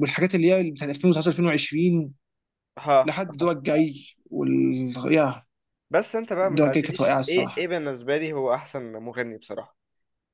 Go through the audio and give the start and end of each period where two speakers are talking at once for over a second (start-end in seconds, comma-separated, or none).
6.4-7.7